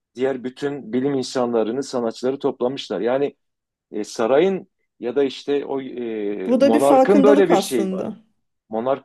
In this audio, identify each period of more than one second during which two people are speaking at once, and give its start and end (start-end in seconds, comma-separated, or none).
6.5-8.1